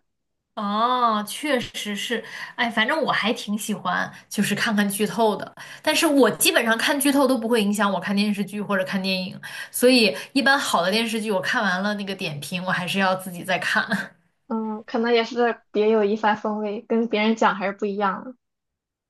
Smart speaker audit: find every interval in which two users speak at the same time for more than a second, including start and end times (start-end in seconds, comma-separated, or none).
none